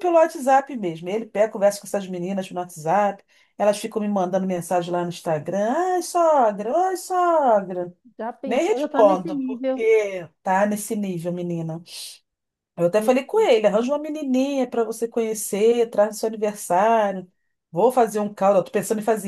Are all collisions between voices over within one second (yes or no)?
no